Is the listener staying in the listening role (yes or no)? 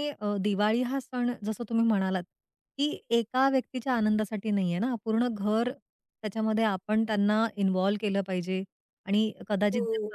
yes